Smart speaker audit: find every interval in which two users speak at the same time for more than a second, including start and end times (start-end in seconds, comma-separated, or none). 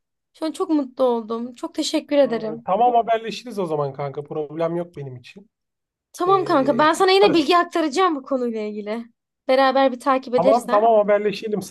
6.2-7.5